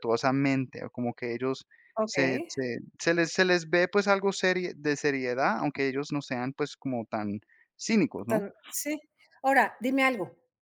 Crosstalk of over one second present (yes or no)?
no